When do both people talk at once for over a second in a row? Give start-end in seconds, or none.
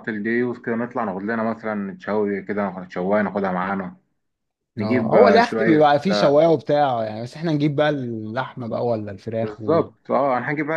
4.8-6.4